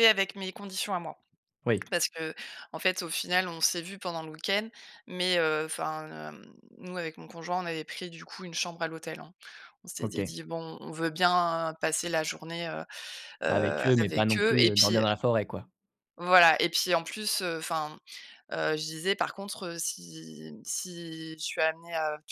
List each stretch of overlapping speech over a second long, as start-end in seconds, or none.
13.5-15.1